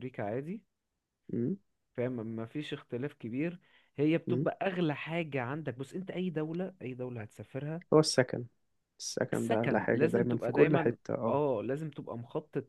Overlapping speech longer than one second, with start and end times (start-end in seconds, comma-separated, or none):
9.3-11.4